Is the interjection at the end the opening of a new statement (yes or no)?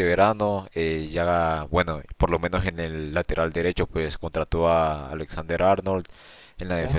no